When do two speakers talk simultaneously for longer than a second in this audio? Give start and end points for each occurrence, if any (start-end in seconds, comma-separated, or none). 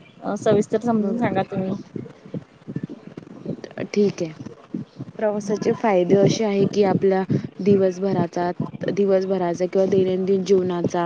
none